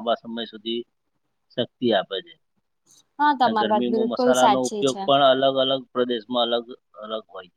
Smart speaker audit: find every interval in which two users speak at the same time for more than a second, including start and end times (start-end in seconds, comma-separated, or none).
3.6-5.0